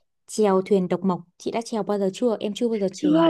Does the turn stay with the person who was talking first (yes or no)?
no